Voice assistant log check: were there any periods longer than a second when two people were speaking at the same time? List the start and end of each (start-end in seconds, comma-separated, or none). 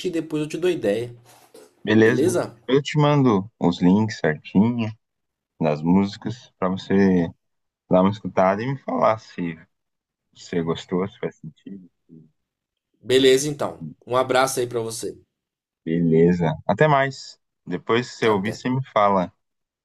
none